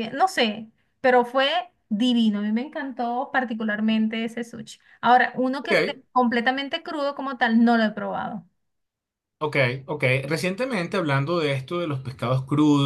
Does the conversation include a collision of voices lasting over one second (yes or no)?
no